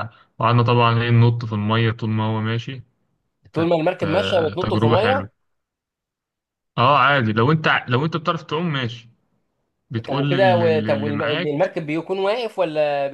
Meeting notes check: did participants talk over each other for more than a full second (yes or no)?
yes